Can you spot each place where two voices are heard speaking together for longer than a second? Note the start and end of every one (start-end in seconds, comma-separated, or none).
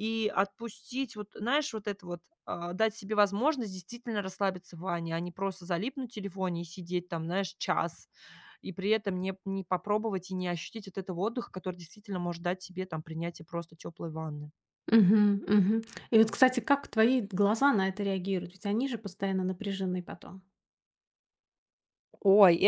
none